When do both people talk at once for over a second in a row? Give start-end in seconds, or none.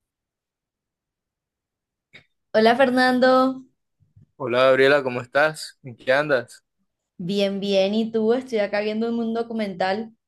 none